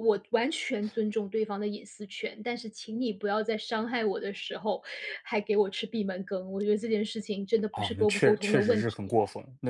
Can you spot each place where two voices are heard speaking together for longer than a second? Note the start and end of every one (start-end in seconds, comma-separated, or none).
7.7-9.1